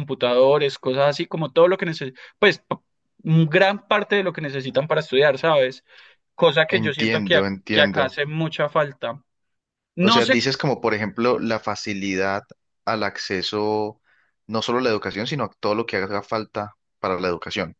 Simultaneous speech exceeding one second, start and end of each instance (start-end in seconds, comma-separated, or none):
6.7-8.2